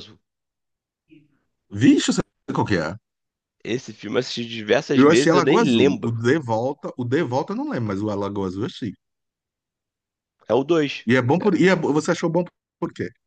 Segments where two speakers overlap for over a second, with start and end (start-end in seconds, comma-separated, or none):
5.0-6.2